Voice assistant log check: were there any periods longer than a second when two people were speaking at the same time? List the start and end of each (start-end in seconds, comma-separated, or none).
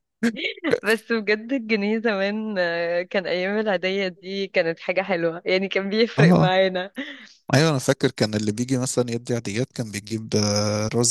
none